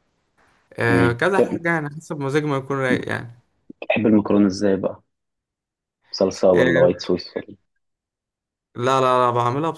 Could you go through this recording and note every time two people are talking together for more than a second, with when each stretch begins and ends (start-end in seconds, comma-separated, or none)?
none